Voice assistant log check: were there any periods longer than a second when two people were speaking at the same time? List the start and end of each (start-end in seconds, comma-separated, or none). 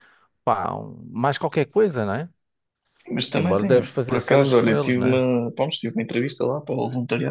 3.3-5.2